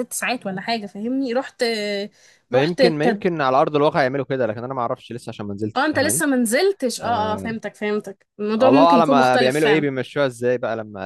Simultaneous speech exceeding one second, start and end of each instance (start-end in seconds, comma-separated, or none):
8.6-9.9